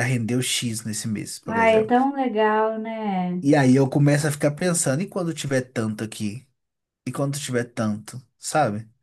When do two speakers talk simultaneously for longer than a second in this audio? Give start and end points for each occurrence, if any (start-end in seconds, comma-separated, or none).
none